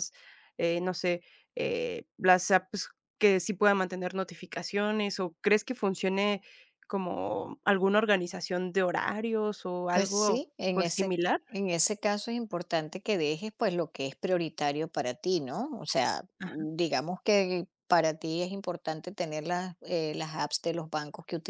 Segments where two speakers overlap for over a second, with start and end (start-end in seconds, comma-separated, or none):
9.9-11.4